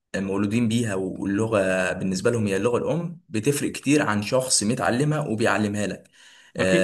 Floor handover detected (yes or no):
no